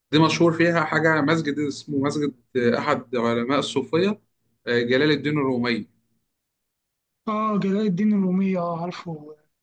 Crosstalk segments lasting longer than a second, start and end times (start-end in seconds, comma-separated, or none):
none